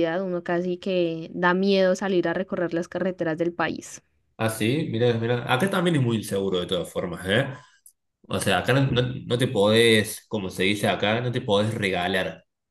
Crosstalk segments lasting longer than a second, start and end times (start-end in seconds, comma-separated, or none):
none